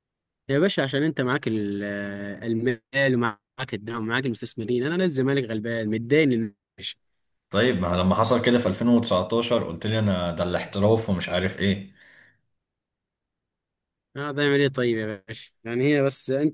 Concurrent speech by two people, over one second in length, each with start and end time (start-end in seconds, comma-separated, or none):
none